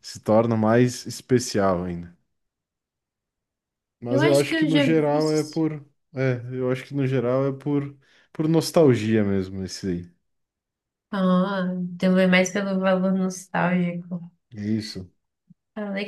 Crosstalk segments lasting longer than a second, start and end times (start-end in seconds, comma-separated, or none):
4.1-5.6